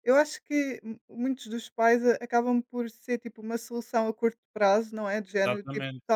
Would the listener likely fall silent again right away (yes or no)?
yes